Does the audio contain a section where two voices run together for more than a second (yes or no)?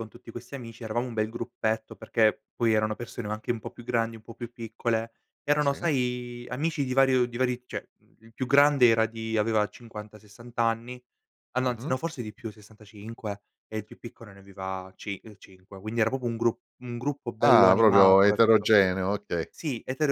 yes